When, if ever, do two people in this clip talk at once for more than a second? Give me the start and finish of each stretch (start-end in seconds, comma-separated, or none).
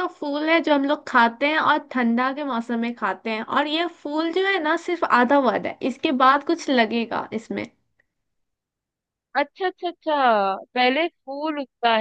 none